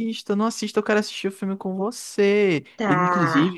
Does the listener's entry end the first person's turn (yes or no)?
no